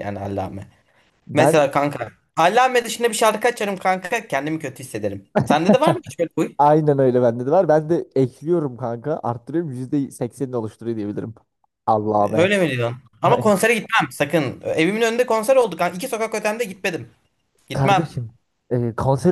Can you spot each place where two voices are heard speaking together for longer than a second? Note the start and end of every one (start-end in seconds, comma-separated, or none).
none